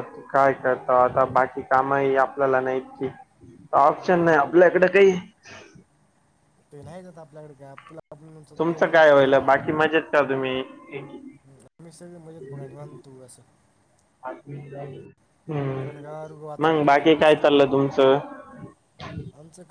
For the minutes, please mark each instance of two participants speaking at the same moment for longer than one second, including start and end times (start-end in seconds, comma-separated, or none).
15.8-17.6